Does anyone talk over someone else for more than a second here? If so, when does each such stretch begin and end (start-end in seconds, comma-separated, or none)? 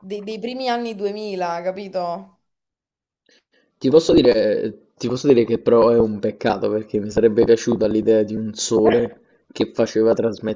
none